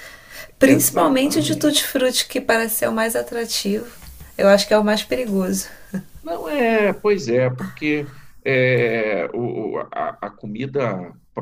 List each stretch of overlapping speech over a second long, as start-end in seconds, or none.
0.7-1.9